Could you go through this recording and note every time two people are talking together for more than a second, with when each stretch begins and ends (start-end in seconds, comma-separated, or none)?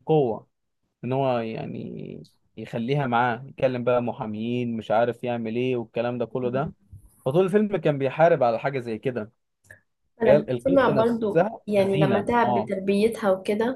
10.2-12.7